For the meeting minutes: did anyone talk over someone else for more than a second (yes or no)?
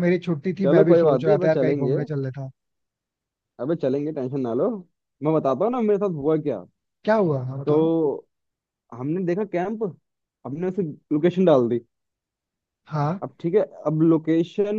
yes